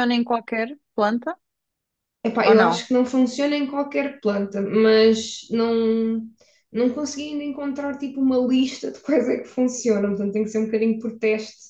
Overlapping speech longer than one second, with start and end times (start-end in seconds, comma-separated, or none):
none